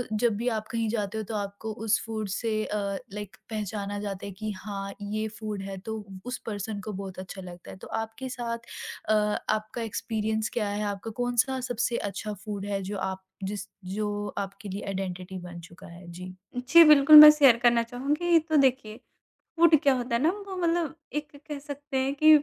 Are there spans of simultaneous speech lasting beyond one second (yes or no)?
no